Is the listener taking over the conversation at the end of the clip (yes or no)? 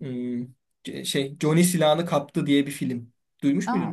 yes